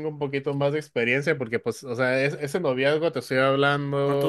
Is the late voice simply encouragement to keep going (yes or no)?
yes